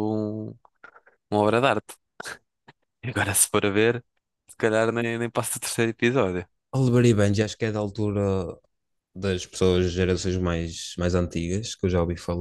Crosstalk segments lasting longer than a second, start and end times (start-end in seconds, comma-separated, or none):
none